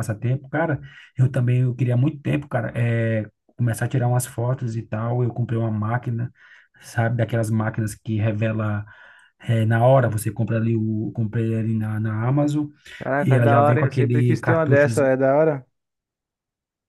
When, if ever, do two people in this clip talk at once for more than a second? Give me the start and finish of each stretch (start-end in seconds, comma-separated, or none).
13.2-14.9